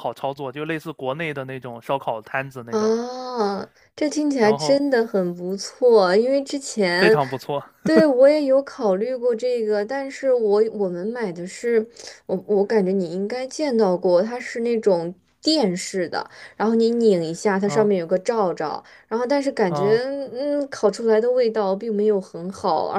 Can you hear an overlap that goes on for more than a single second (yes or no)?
no